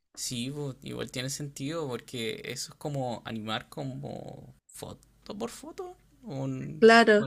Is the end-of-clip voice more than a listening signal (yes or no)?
yes